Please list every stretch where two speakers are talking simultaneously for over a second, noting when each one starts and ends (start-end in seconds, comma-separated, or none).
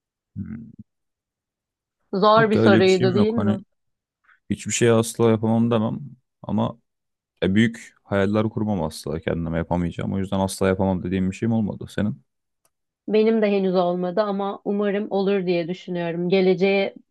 2.4-3.6